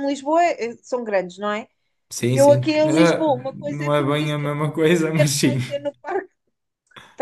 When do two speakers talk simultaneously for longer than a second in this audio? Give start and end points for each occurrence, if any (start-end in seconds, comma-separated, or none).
2.3-5.6